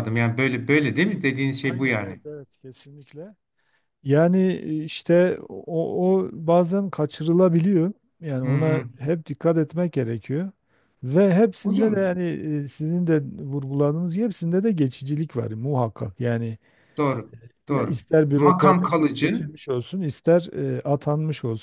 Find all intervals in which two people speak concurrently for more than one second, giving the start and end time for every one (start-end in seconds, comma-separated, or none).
17.7-19.5